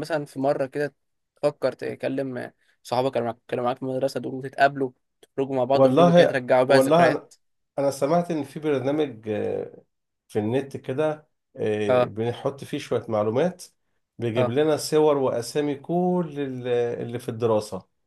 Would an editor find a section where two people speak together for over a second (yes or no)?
yes